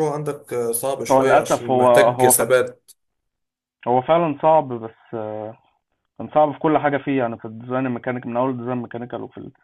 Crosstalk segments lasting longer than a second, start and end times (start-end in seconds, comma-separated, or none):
1.1-2.4